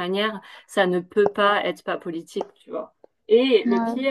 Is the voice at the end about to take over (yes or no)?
no